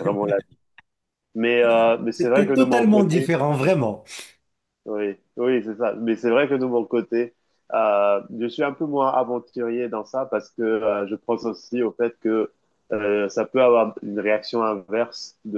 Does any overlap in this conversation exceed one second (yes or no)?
yes